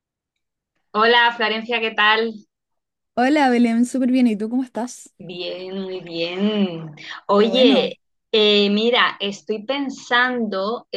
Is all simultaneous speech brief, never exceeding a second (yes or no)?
yes